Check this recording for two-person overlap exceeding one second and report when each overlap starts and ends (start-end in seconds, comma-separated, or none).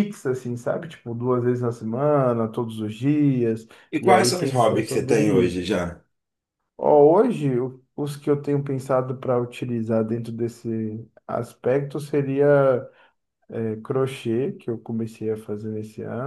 4.0-5.6